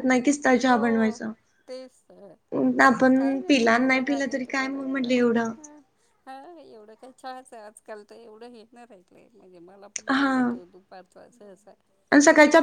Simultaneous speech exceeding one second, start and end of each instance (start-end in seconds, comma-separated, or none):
2.9-5.5